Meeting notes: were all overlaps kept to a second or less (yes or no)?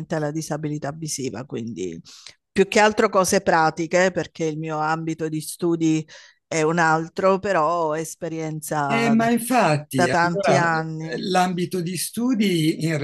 no